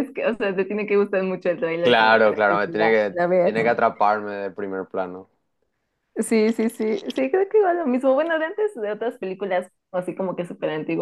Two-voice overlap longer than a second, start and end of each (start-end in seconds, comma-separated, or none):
1.8-3.5